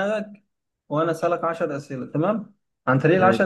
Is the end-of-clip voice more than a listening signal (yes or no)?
no